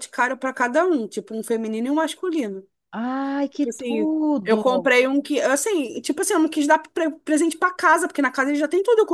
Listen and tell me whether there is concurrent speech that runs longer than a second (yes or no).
yes